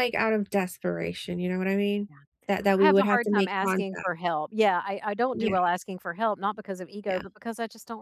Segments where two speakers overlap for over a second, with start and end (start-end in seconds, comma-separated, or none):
2.8-4.1